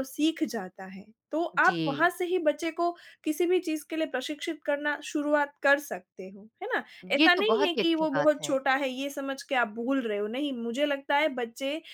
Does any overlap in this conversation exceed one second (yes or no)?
yes